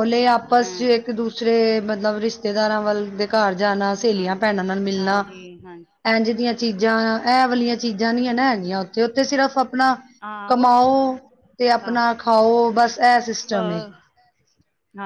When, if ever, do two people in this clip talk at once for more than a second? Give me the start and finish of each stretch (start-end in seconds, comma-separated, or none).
none